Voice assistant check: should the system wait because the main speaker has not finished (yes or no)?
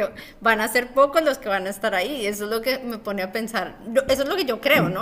no